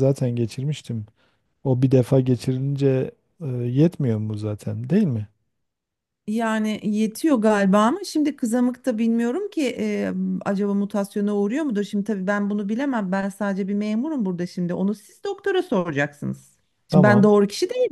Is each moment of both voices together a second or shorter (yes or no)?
yes